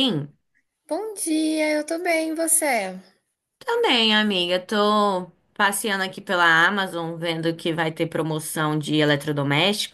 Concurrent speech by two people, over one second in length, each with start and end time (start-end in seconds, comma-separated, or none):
none